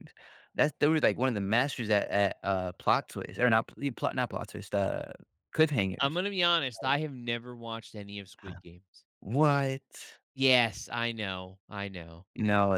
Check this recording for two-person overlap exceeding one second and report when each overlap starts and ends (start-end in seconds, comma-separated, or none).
none